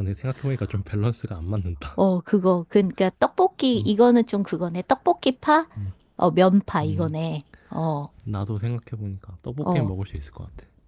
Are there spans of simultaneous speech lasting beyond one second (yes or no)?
no